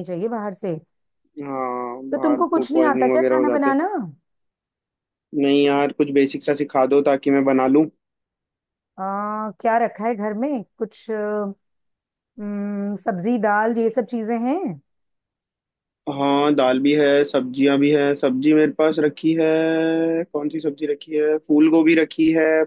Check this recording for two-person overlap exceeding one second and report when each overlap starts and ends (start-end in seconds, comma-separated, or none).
2.1-3.7